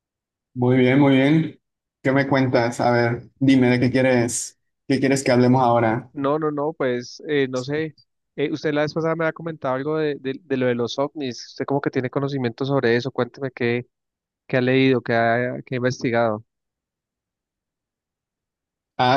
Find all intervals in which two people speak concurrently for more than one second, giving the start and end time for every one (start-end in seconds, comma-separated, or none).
none